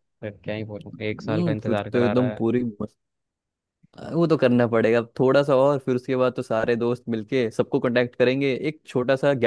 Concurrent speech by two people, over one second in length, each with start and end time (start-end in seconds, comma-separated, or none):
0.8-2.5